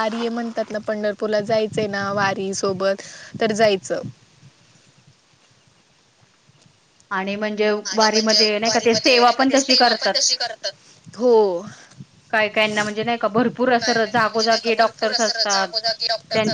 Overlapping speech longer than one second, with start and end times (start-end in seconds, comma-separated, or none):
7.9-10.1